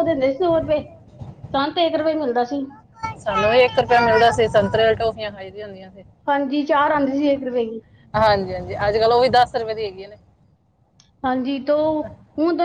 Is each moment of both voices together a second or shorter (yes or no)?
yes